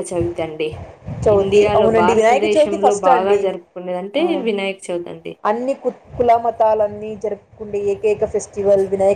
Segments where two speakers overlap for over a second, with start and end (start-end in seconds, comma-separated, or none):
1.4-3.4